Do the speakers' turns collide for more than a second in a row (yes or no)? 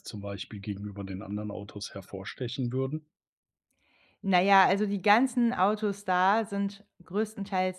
no